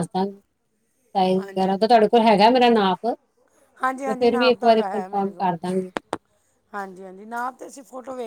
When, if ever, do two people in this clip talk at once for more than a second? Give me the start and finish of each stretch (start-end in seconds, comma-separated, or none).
4.1-5.5